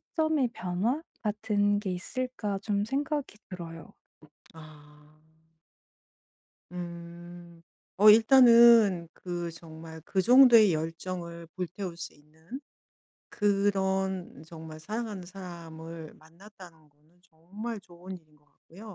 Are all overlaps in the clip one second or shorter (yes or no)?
yes